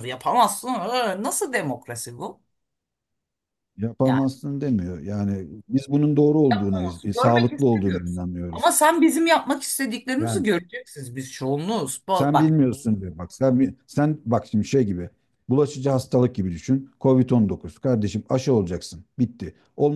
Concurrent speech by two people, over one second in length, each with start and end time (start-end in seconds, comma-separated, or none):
6.5-8.7